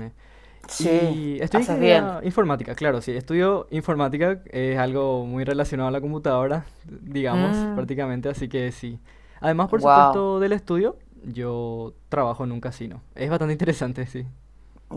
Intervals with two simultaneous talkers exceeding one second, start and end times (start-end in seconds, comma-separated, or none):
0.8-2.1